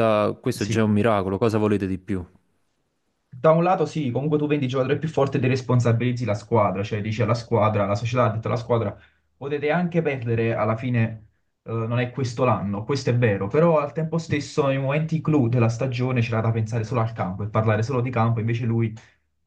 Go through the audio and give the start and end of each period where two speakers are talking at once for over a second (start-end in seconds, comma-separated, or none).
none